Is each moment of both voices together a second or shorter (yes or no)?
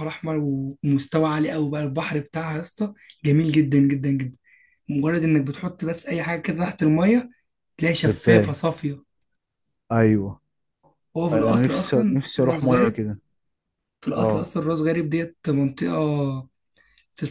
no